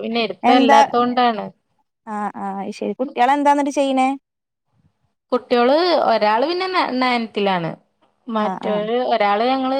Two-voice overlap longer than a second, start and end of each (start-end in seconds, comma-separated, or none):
none